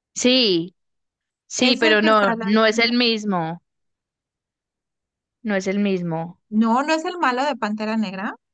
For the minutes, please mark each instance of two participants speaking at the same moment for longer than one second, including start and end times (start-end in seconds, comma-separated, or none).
1.6-3.0